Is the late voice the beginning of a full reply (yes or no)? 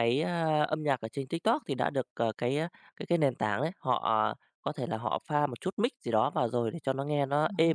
no